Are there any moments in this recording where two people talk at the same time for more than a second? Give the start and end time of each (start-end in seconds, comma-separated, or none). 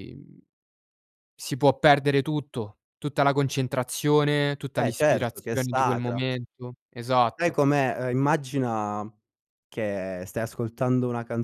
4.8-6.2